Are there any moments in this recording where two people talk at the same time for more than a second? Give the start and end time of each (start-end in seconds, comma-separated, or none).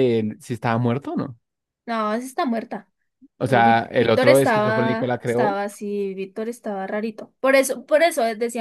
3.5-5.6